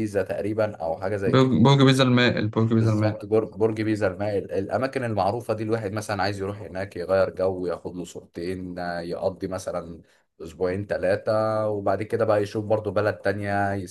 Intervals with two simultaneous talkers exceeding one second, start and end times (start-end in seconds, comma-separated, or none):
none